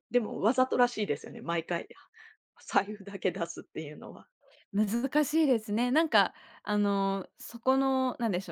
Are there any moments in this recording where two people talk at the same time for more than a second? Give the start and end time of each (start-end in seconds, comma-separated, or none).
none